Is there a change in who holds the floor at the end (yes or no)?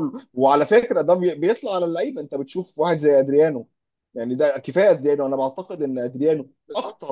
no